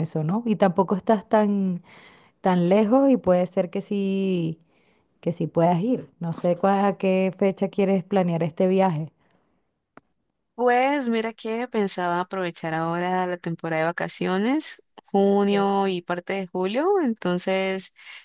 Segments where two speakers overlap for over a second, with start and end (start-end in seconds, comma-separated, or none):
none